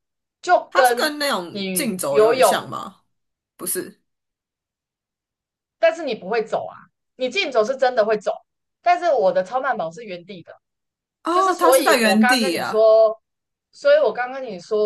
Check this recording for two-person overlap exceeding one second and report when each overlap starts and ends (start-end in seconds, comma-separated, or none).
0.7-2.5, 11.3-12.8